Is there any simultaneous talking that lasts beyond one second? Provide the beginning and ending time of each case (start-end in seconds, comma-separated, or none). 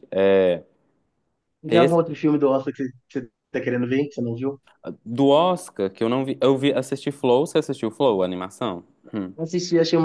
none